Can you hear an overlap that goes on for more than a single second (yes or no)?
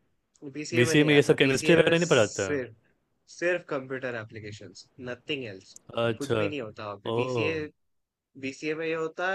yes